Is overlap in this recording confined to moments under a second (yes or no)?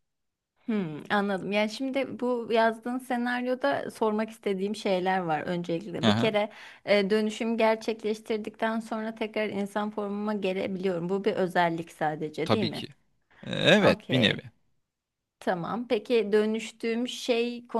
yes